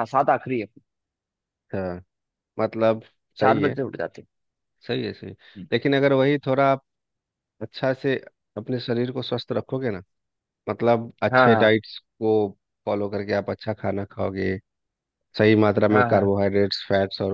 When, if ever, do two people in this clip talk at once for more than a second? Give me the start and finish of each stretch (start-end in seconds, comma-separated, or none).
none